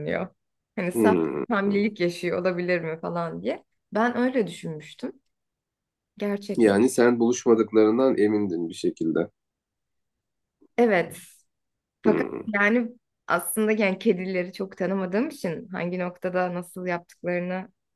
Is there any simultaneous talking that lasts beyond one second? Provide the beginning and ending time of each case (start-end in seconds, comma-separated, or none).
none